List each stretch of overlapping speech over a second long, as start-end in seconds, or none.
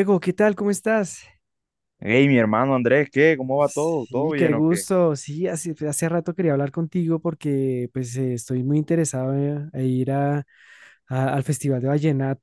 3.6-4.9